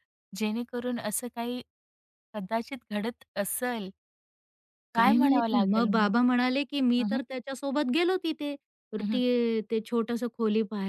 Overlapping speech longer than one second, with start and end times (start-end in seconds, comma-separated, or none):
4.9-6.3